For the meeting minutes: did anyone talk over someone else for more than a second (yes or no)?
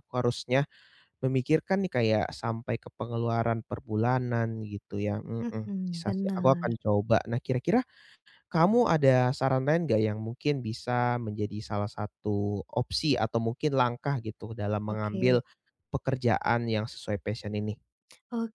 yes